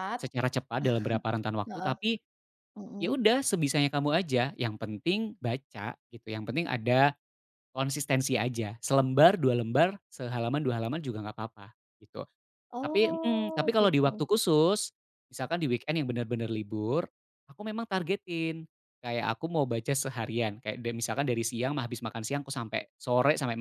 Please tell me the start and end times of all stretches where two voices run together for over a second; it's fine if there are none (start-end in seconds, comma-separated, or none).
12.8-14.2